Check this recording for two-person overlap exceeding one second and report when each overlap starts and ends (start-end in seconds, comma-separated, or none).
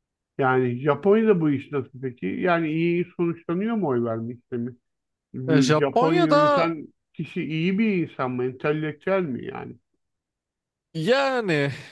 5.5-6.7